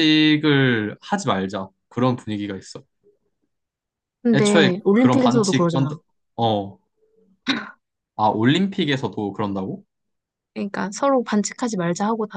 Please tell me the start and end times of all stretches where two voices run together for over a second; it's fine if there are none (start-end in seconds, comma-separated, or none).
4.3-5.9